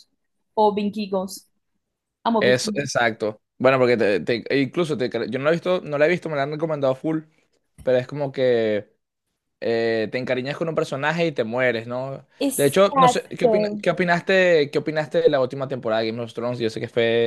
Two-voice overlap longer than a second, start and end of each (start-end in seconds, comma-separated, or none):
12.4-13.8